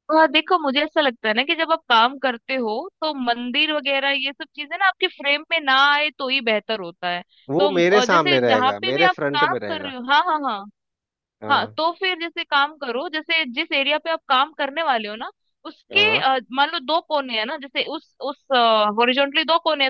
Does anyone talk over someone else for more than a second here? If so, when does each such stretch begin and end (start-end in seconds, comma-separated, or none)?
7.6-9.9